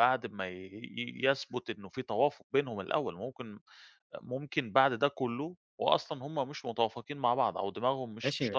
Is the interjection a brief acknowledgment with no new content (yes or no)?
no